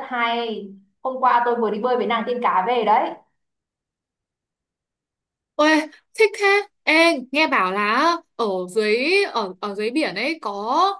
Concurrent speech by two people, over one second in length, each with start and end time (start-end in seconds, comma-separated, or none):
none